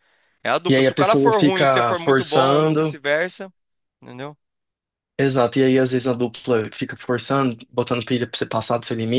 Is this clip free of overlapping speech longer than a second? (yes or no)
no